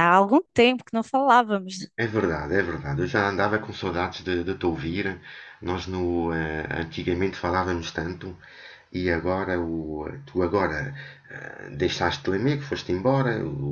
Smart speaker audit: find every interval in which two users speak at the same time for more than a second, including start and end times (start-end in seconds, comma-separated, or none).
none